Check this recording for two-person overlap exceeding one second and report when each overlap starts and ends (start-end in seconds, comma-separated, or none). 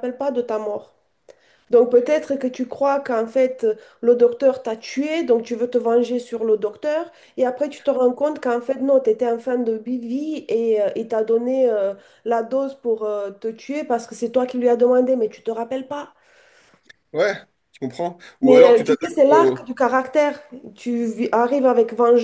18.4-19.7